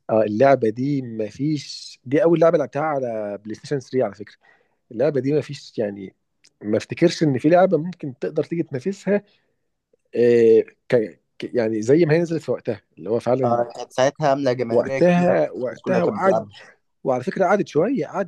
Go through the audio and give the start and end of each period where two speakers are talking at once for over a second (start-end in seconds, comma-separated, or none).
14.7-16.4